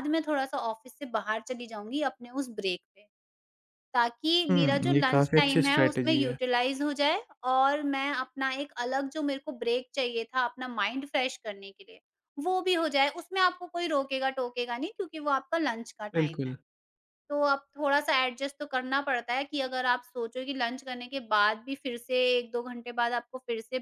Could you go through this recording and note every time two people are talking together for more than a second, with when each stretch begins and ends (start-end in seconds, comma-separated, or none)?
4.5-6.4